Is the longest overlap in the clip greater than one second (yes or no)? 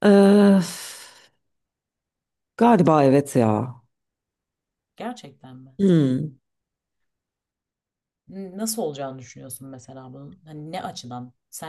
no